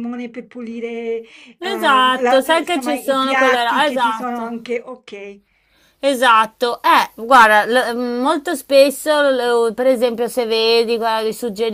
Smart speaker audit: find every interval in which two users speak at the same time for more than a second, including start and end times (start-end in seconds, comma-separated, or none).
1.6-4.5